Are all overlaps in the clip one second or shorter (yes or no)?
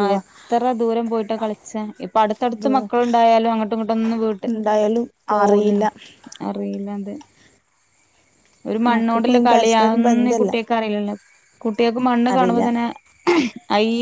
no